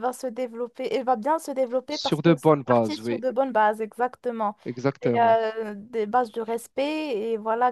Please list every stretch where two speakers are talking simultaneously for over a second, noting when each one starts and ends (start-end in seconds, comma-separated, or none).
1.9-3.2